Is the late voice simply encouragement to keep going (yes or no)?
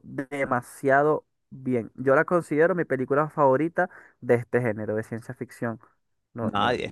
no